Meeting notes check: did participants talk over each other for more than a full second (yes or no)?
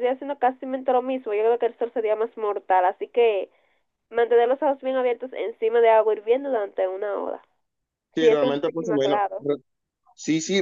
yes